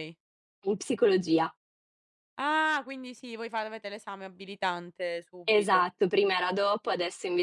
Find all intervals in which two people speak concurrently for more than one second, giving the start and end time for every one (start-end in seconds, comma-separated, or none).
none